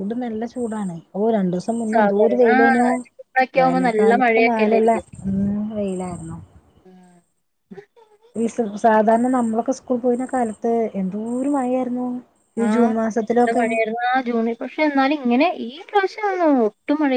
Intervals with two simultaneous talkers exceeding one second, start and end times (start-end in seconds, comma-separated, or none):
3.6-5.0